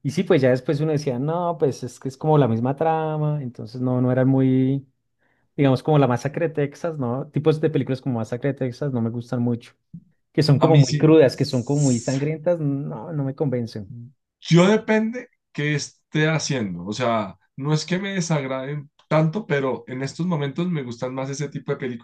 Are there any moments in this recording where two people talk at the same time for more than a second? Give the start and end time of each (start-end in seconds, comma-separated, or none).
10.6-12.2